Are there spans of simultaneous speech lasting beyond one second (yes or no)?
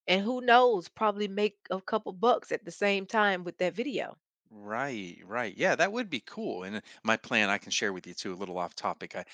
no